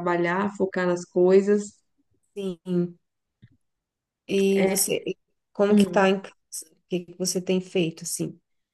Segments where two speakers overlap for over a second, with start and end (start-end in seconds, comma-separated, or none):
none